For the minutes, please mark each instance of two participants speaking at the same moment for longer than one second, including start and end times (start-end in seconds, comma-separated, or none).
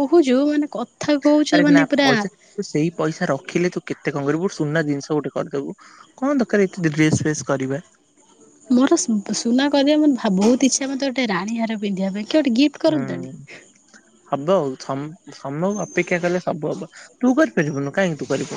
none